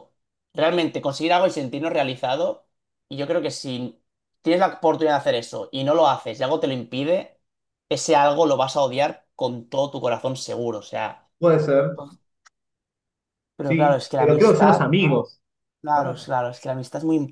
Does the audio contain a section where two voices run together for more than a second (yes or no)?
yes